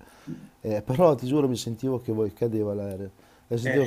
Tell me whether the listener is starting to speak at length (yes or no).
no